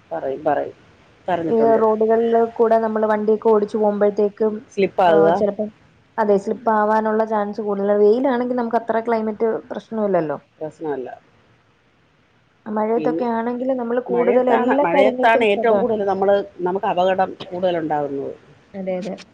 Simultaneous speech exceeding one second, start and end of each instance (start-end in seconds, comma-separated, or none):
14.1-15.9